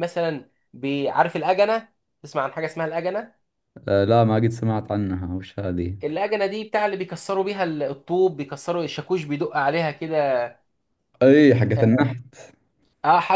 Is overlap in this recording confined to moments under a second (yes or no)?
yes